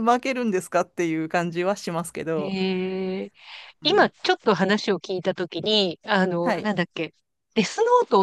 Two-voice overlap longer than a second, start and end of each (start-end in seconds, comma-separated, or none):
none